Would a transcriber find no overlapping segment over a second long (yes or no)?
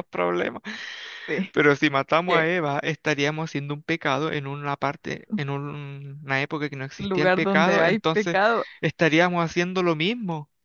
no